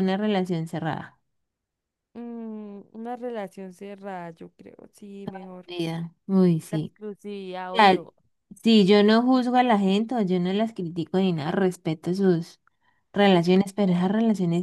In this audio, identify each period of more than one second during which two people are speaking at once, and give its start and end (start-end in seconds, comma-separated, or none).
none